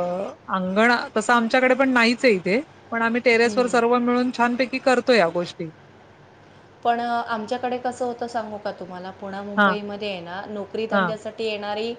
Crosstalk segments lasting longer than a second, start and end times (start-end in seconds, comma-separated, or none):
none